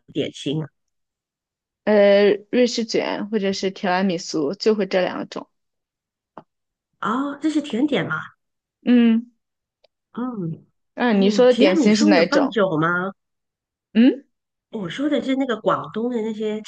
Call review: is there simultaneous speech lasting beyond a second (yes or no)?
yes